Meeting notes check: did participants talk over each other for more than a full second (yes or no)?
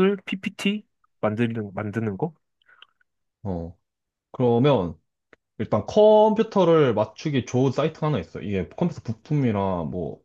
no